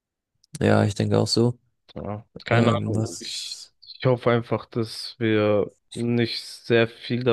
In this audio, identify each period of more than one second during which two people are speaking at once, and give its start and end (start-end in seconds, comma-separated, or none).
2.5-3.7